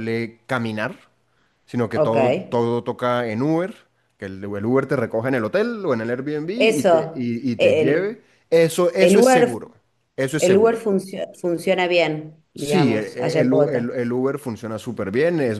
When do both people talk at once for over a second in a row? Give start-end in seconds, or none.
6.5-8.2, 12.5-14.0